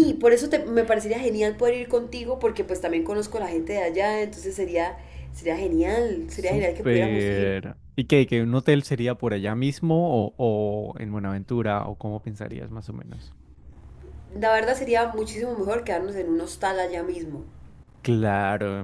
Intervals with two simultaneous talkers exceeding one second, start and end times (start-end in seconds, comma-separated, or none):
6.3-7.5